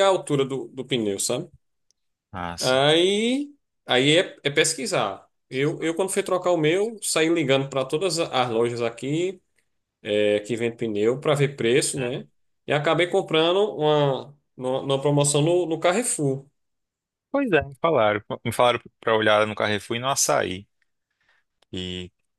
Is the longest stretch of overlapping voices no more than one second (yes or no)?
yes